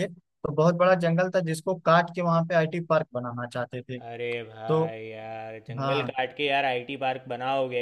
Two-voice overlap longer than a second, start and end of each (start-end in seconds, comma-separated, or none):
none